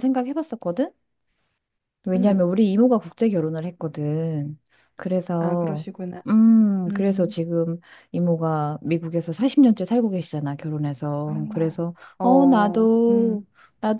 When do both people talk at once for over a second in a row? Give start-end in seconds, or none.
12.2-13.4